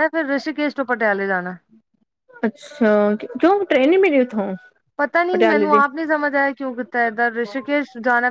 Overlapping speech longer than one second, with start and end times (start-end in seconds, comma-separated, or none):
none